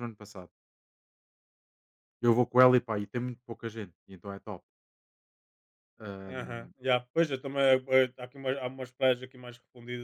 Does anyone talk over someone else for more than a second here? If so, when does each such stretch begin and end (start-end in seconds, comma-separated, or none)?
none